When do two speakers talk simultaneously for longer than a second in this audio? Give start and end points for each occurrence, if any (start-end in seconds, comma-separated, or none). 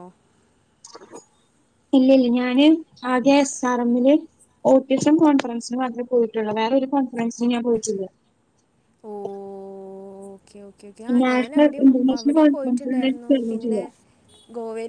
11.3-13.8